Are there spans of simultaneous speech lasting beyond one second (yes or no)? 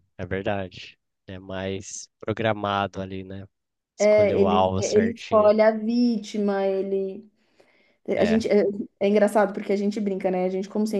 yes